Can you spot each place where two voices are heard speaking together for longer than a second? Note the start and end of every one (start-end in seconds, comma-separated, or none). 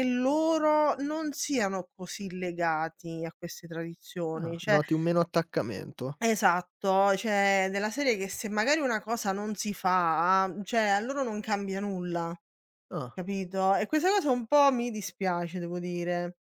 none